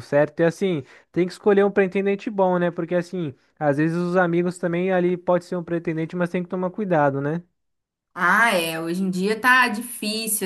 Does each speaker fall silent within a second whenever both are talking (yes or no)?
yes